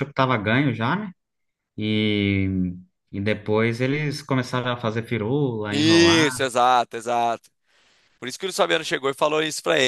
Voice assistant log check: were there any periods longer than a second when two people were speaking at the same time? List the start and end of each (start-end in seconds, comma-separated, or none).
none